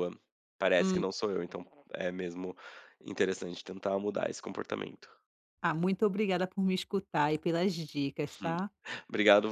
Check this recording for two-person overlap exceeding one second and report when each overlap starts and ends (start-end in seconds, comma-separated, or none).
none